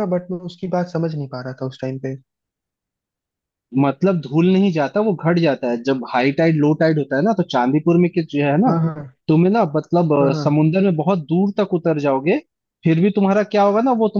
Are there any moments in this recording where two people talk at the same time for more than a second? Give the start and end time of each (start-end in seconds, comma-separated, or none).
none